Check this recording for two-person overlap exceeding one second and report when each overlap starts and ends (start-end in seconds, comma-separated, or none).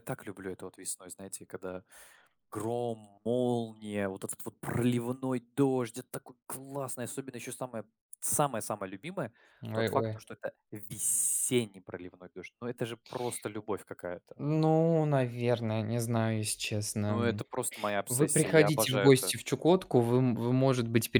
18.1-19.3